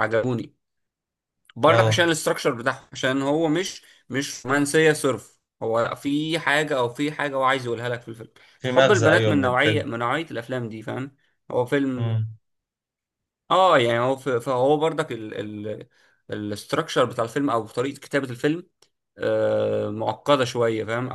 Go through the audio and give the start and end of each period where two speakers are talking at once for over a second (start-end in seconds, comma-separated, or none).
8.6-9.8